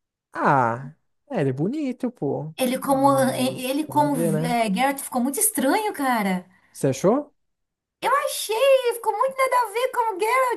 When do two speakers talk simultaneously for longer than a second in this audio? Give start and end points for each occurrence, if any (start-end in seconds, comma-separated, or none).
2.5-4.5